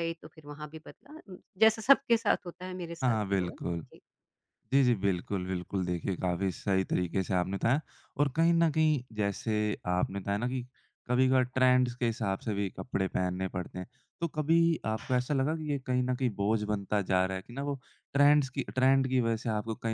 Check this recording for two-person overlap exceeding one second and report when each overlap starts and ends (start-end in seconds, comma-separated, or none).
none